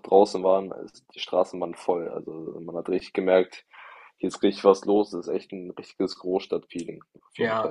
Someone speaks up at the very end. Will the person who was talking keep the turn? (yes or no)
no